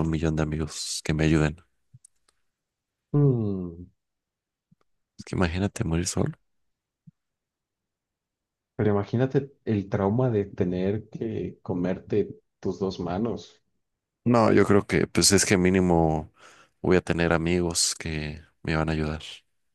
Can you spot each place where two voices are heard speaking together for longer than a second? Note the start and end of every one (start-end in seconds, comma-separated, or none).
none